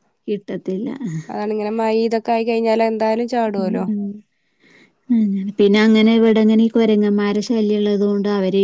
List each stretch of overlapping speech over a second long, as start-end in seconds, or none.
none